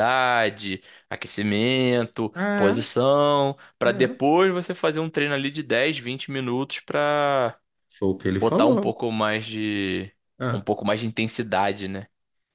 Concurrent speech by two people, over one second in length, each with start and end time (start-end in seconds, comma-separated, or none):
none